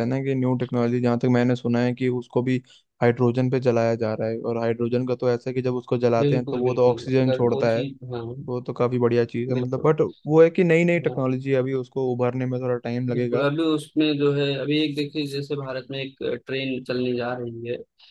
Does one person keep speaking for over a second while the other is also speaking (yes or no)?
yes